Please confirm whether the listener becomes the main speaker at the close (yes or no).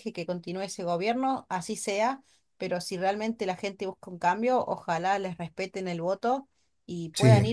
no